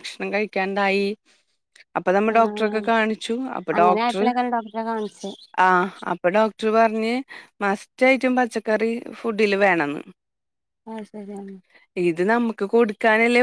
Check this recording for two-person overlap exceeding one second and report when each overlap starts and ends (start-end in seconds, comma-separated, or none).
none